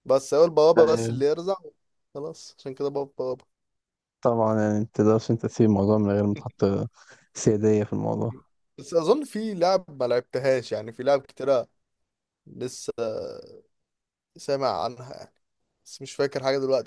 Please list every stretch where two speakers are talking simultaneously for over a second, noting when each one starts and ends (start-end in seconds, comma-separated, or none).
none